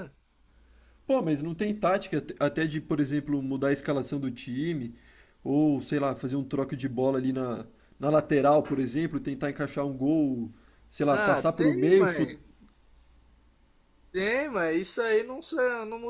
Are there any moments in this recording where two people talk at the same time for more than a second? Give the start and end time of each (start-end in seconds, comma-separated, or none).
11.1-12.3